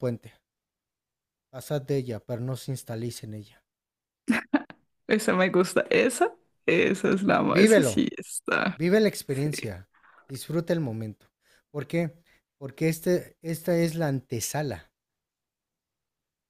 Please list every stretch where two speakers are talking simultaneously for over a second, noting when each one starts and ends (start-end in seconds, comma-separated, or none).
none